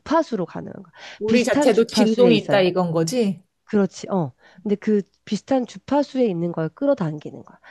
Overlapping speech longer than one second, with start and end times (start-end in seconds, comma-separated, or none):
1.2-2.5